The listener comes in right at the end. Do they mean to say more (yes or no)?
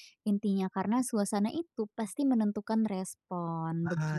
yes